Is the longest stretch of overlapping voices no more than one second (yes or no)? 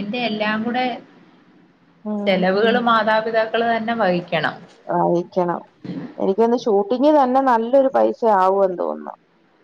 yes